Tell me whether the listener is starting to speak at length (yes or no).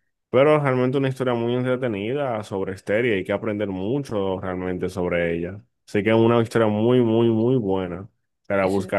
no